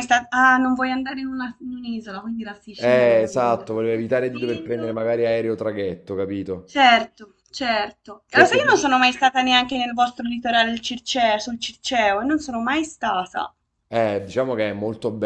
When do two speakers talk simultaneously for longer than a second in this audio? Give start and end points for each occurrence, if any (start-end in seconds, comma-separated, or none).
2.8-5.0